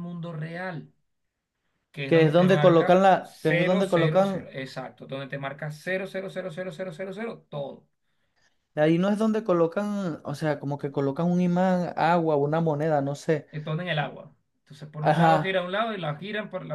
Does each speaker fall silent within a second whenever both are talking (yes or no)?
no